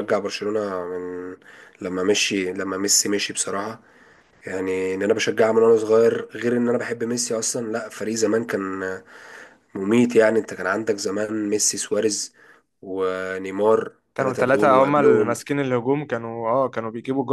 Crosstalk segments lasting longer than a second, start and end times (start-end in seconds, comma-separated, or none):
14.1-15.4